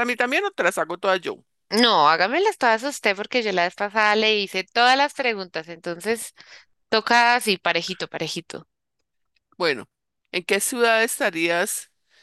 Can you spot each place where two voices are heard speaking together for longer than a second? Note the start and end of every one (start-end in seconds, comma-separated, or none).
none